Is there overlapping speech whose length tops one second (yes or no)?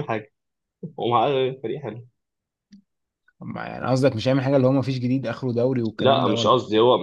no